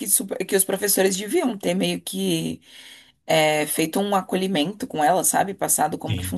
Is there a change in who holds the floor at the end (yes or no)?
yes